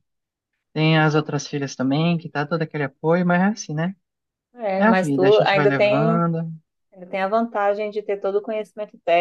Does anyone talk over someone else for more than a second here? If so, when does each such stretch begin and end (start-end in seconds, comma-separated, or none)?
4.8-6.2